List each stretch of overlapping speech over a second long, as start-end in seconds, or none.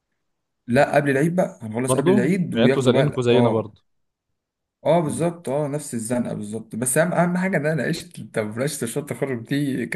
1.9-3.8